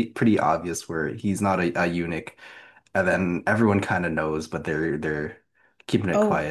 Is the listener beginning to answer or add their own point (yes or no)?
yes